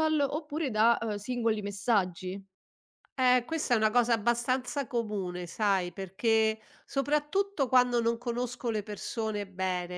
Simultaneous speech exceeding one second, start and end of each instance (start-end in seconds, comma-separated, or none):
none